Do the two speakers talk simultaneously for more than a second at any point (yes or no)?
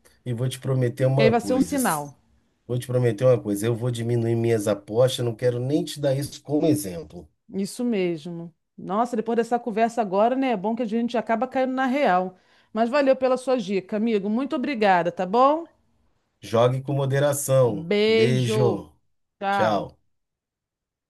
yes